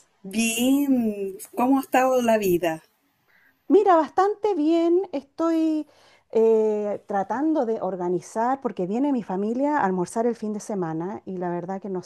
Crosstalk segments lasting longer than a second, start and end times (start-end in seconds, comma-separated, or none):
none